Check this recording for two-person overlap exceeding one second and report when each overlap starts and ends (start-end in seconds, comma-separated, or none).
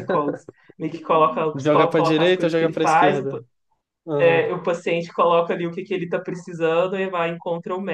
1.6-3.4